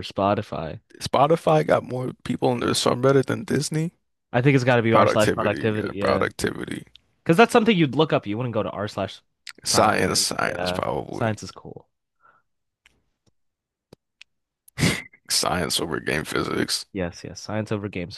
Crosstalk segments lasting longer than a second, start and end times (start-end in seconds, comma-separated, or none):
4.9-6.2, 9.7-11.3